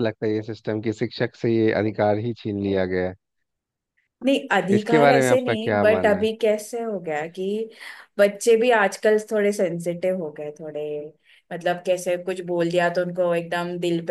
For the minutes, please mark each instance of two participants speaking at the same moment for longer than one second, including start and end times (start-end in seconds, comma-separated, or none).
4.8-6.3